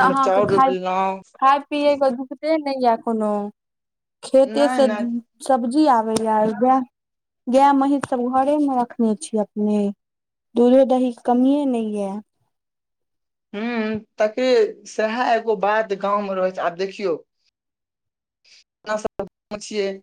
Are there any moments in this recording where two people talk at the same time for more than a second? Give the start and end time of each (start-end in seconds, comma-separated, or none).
none